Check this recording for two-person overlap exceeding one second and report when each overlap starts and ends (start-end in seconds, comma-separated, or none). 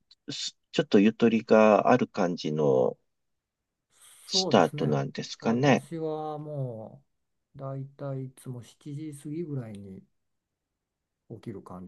4.3-5.9